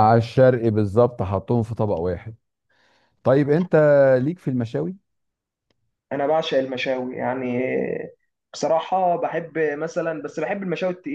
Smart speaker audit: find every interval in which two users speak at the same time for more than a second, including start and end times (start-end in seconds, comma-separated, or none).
none